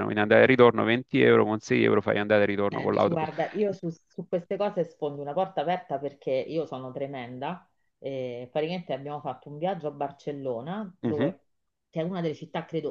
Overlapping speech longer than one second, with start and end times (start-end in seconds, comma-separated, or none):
none